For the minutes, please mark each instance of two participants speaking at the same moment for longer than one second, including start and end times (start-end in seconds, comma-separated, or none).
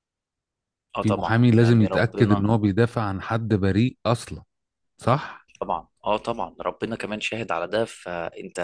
1.0-2.5